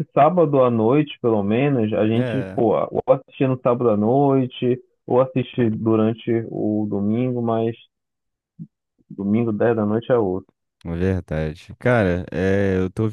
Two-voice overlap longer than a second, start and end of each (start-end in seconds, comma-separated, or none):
none